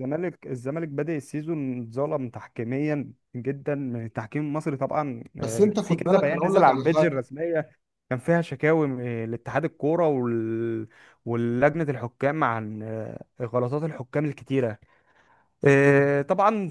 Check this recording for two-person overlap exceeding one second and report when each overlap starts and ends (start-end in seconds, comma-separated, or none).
5.4-7.2